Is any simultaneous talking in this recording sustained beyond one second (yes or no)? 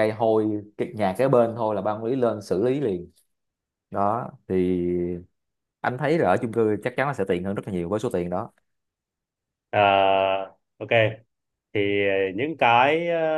no